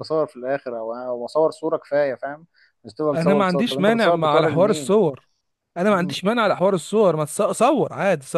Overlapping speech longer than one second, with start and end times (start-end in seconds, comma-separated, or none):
3.1-5.0